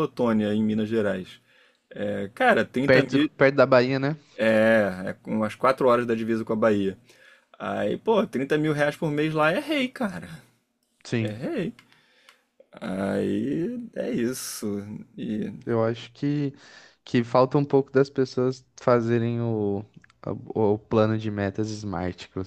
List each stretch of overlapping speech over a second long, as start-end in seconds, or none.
none